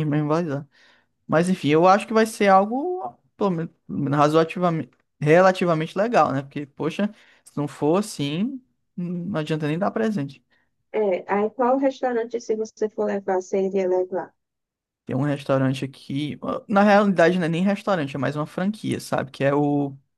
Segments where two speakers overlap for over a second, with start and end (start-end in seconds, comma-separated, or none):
none